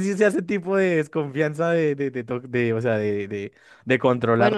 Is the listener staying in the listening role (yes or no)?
no